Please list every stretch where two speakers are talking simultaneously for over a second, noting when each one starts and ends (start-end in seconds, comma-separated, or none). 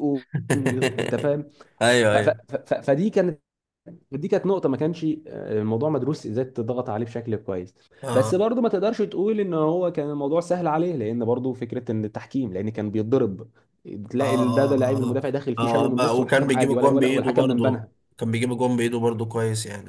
14.2-17.9